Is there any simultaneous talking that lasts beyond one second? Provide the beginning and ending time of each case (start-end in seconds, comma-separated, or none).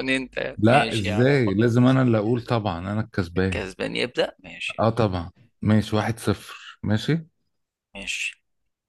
0.6-2.0